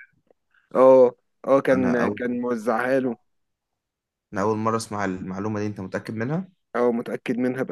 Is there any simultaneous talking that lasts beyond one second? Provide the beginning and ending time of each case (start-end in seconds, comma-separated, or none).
none